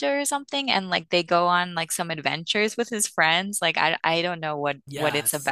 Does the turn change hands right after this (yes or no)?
yes